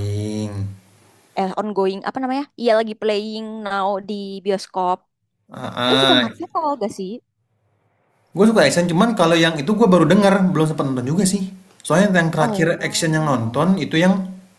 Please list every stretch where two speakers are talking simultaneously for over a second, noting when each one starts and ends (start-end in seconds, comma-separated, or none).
12.4-13.7